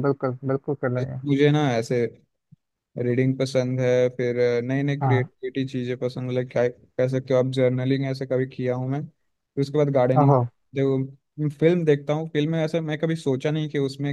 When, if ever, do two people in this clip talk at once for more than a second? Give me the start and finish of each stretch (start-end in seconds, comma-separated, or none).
none